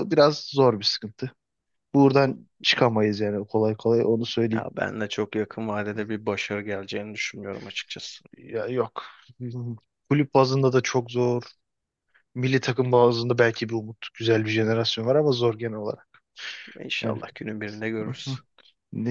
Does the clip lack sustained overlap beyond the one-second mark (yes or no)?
yes